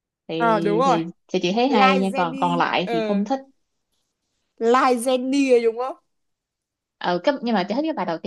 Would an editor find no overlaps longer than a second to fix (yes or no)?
no